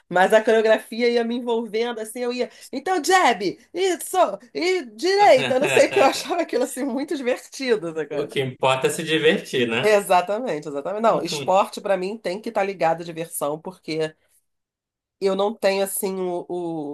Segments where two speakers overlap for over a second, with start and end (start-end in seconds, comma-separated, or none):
none